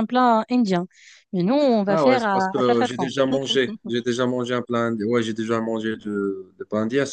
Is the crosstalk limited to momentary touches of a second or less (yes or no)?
no